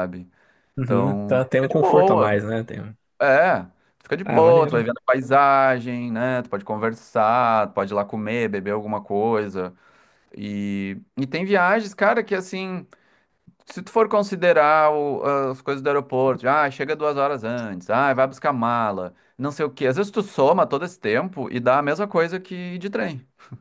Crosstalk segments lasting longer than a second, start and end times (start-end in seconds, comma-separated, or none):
0.8-2.4